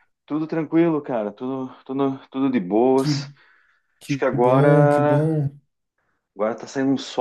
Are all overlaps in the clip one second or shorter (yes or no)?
no